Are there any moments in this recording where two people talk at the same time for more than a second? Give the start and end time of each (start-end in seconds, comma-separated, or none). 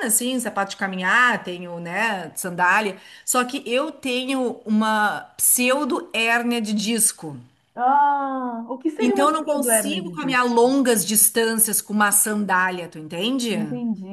9.0-10.5